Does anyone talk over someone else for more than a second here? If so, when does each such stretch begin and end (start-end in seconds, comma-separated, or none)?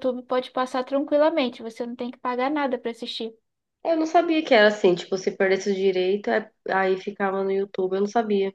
none